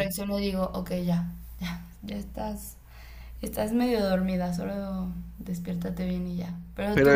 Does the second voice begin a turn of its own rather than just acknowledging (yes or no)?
yes